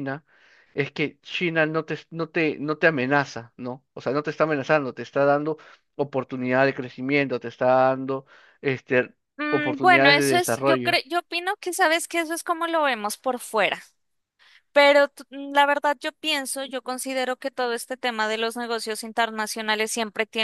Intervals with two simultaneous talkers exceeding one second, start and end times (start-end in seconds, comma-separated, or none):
9.5-11.0